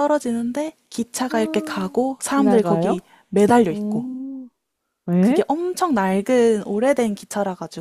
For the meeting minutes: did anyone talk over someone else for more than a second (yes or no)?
yes